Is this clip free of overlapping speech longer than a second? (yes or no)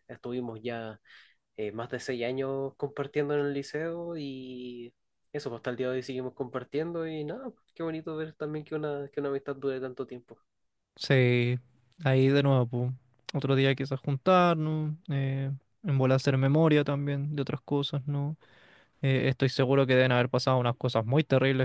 yes